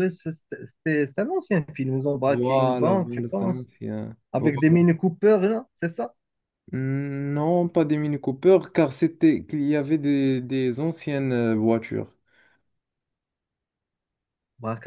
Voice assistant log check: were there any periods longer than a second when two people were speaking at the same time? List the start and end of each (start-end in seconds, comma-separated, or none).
2.3-3.7